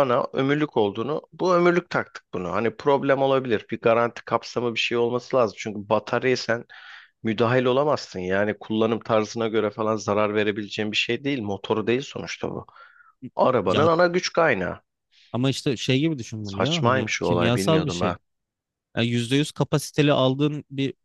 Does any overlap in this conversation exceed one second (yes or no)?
yes